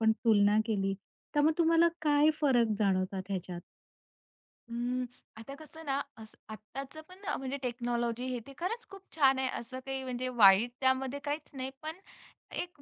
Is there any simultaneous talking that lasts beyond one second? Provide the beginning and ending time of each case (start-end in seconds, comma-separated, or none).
none